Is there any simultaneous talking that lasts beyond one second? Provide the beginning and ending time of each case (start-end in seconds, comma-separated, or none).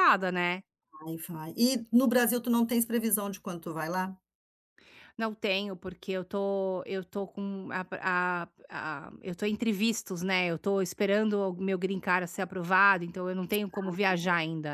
none